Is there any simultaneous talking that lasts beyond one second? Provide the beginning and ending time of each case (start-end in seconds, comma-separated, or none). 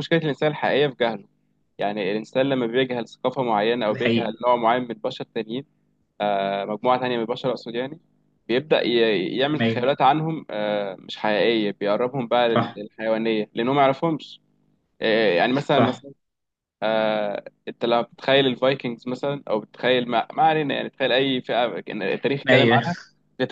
none